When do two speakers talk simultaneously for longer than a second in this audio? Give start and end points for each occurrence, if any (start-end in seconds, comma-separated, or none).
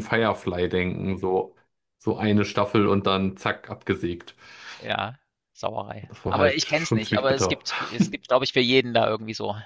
6.1-7.6